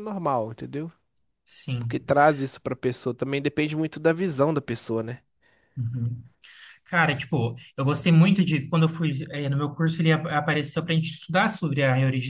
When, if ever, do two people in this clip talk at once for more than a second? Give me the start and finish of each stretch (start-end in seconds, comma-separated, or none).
none